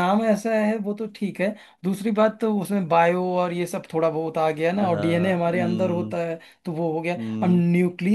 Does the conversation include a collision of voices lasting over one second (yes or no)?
yes